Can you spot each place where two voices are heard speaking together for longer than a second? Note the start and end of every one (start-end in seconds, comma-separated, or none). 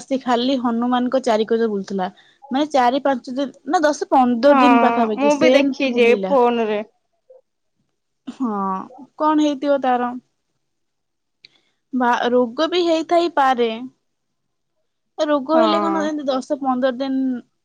4.5-6.3